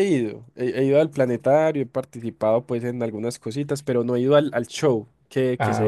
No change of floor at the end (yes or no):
yes